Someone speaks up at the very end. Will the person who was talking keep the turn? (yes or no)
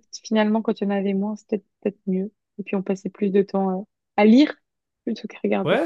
no